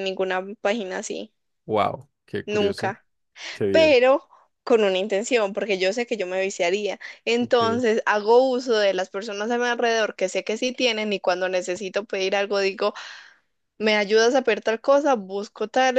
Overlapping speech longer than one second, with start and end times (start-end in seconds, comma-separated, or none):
none